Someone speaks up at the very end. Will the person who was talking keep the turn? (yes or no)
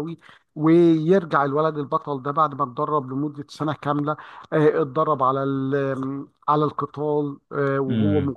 yes